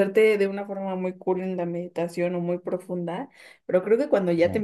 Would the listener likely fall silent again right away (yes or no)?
yes